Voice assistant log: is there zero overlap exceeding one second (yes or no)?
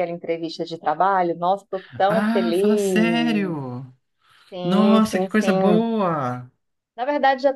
no